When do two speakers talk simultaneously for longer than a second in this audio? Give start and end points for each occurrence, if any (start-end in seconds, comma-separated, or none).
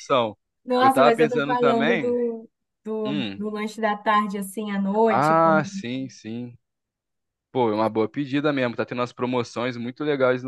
0.8-2.2